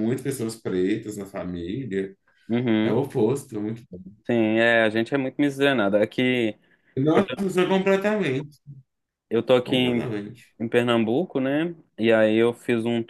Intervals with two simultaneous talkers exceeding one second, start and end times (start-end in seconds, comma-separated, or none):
none